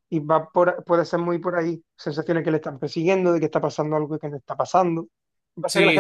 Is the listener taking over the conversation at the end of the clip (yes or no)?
no